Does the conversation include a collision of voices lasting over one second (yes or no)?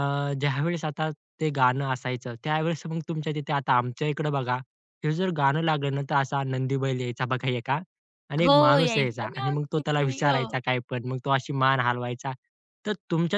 yes